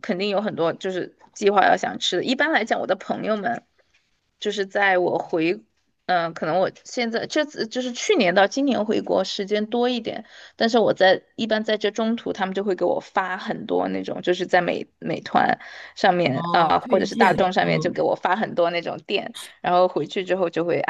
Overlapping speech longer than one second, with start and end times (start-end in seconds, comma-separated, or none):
16.3-18.0